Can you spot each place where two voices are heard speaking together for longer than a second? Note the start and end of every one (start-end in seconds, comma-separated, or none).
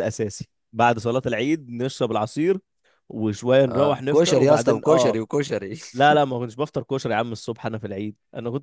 3.7-5.2